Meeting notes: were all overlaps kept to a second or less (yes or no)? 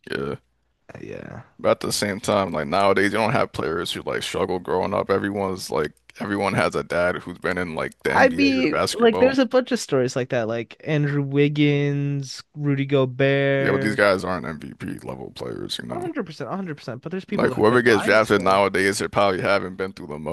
no